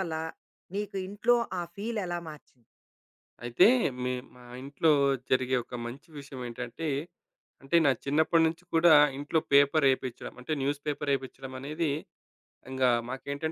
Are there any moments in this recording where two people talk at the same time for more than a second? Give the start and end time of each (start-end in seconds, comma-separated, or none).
none